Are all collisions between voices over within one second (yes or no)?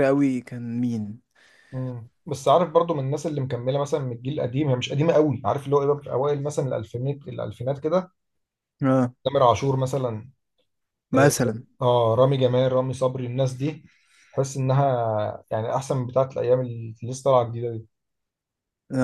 yes